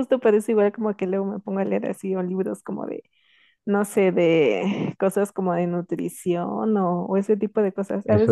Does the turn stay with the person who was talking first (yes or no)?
yes